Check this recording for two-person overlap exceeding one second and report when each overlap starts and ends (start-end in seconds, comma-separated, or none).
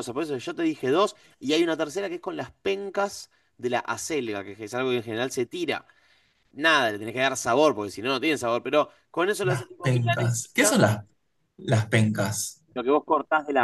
9.4-10.8